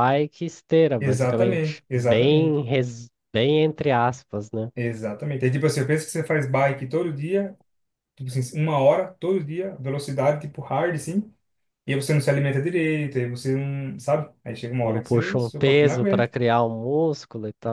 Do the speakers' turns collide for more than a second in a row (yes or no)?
yes